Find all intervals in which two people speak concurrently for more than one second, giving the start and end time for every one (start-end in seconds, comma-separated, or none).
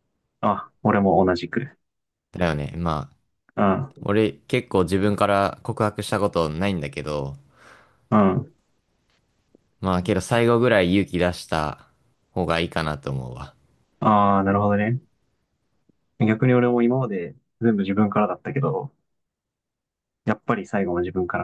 none